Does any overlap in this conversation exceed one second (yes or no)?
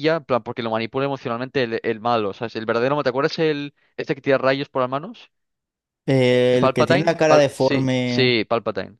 yes